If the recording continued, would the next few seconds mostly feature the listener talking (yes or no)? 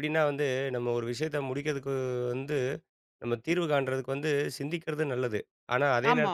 no